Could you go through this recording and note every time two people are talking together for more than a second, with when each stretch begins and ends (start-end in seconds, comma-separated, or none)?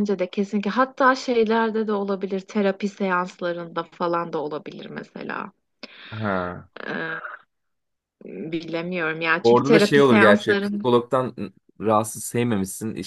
9.4-10.8